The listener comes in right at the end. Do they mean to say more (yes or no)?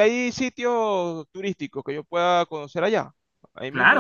yes